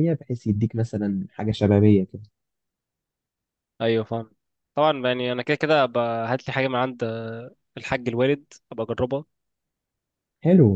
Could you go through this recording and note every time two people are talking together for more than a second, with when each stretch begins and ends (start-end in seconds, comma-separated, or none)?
none